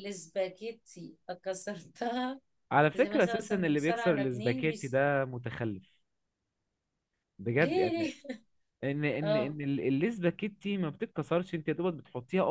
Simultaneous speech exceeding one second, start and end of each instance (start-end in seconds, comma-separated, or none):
2.9-5.0